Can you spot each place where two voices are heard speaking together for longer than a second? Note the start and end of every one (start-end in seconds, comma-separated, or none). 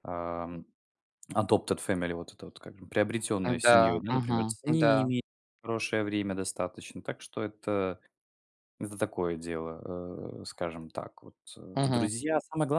3.6-5.1